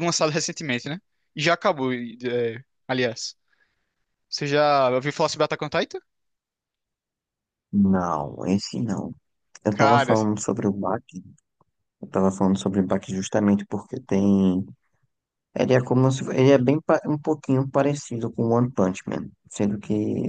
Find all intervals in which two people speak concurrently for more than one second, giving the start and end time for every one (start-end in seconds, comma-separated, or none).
none